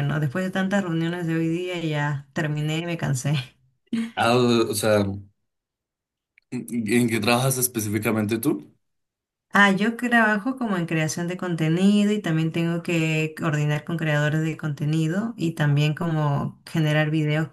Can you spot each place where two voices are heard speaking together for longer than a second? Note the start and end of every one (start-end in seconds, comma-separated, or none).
none